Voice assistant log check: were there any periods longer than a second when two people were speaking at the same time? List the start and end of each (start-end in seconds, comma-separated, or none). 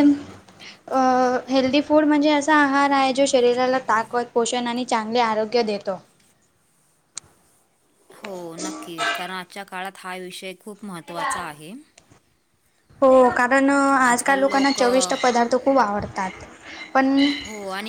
none